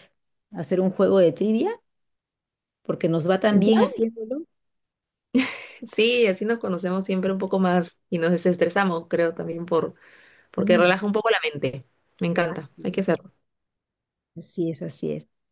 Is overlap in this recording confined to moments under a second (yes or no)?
yes